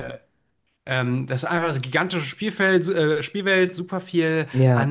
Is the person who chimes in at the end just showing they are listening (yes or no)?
yes